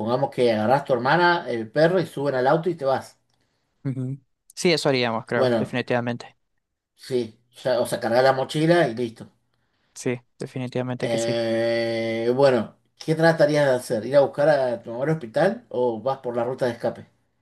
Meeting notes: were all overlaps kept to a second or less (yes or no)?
yes